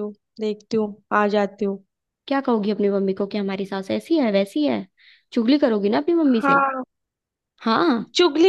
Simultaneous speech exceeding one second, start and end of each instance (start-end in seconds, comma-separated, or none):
none